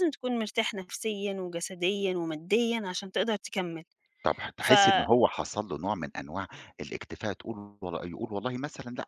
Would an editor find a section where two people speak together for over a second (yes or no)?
no